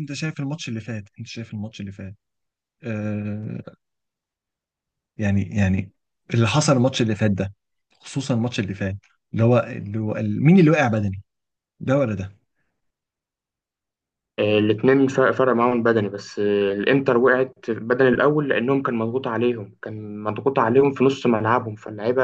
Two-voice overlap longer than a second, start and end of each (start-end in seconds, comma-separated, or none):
none